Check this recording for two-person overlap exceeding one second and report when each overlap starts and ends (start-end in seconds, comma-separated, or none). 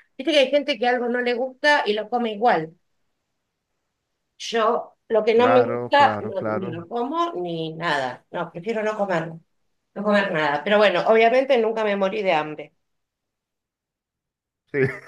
5.3-6.8